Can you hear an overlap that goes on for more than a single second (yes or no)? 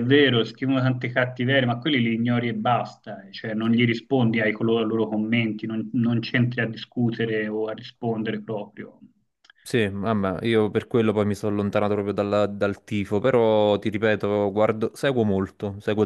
no